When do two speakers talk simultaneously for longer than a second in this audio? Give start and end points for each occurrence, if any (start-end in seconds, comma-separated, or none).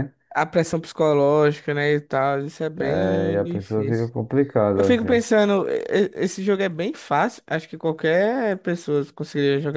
2.8-4.1